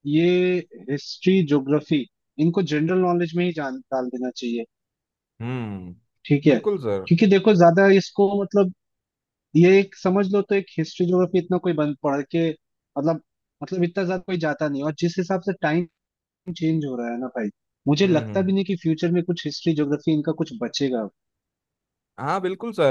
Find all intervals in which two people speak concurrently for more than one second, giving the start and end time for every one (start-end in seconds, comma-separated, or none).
none